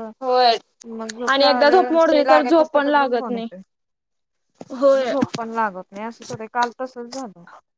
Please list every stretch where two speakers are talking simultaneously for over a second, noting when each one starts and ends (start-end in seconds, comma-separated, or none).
1.3-3.5